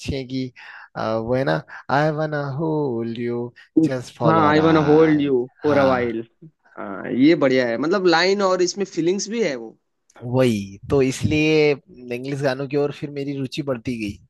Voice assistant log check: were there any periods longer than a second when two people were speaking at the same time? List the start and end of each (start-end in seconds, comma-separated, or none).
4.2-6.1